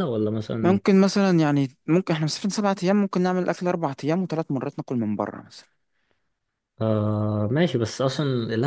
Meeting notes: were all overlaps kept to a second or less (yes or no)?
yes